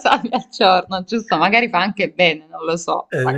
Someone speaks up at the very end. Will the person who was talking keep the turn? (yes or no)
no